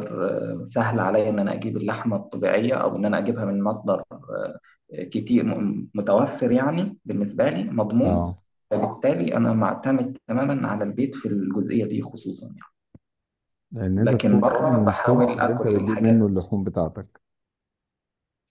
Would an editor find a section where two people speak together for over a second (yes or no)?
yes